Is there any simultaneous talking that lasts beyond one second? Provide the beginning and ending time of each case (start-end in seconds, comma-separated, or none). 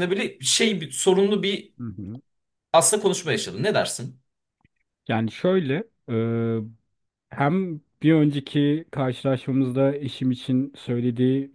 none